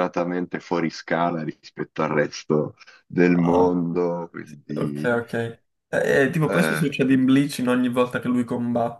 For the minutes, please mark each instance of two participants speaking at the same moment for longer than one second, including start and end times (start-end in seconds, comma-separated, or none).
none